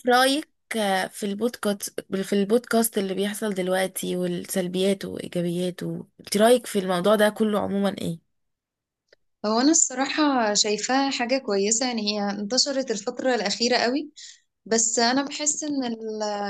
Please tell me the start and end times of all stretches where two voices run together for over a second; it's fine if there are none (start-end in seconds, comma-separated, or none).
none